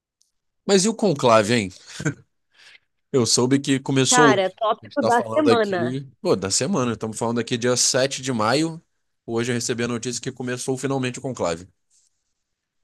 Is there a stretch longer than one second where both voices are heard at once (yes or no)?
yes